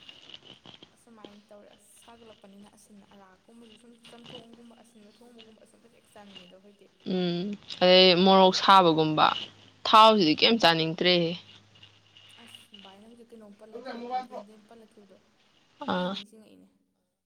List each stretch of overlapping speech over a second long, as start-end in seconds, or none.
none